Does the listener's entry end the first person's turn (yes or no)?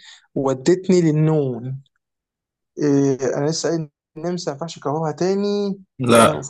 no